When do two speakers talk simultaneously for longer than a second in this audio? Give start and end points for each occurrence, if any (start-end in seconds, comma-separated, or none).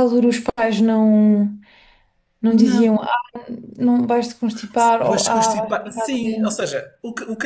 5.0-6.6